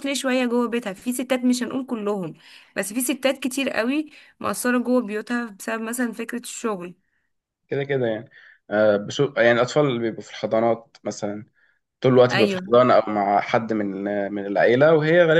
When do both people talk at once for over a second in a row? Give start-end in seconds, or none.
none